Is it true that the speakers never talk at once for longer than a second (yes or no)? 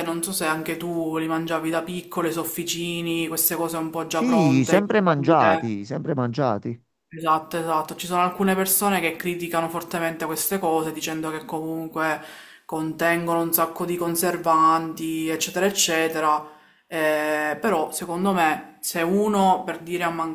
no